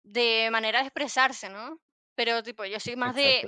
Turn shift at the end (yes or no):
no